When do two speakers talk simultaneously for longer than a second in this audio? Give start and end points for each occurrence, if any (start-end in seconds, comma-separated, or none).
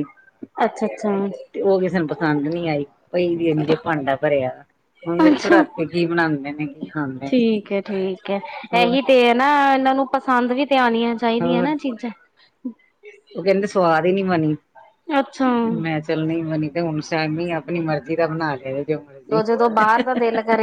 none